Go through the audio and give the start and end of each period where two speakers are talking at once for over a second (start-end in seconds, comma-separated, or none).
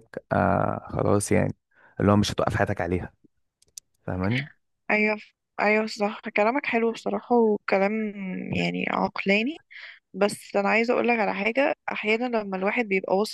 none